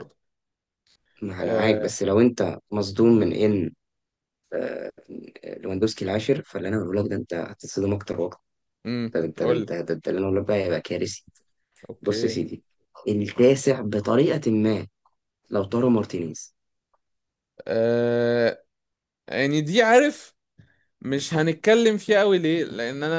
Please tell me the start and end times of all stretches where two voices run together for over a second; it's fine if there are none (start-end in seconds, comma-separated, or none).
none